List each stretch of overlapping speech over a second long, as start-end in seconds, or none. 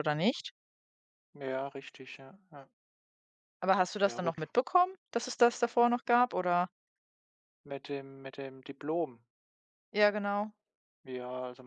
none